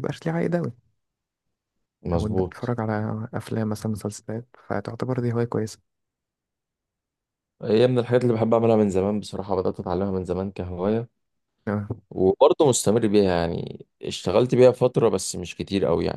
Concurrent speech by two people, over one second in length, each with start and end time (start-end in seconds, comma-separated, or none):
none